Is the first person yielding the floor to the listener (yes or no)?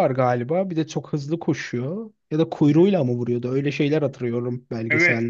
yes